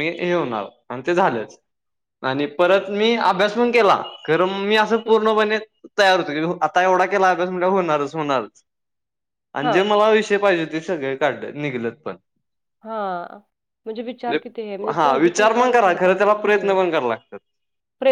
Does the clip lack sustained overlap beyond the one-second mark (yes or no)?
no